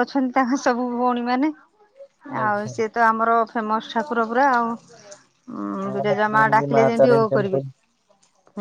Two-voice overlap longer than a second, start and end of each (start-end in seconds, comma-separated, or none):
5.9-7.6